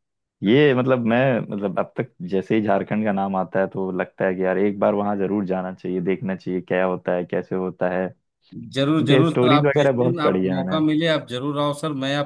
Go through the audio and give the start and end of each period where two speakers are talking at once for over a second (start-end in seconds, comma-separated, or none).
8.8-10.8